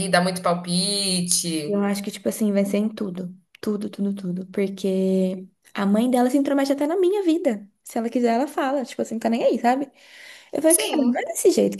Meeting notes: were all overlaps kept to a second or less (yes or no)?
yes